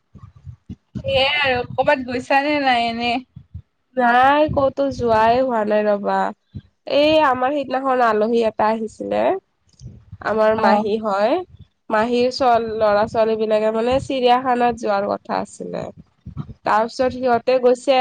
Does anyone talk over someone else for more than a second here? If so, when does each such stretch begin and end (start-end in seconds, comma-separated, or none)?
none